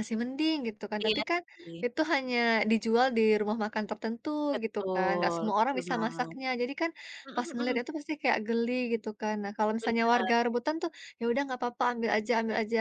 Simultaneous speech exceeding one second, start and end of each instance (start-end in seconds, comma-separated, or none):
4.5-6.4